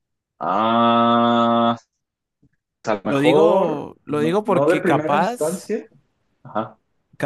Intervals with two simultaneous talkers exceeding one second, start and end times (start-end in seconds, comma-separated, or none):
3.0-5.7